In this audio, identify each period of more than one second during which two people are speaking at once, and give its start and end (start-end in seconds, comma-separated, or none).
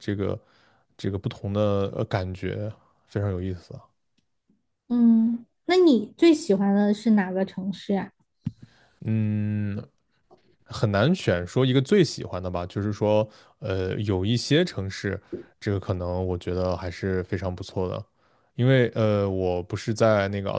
none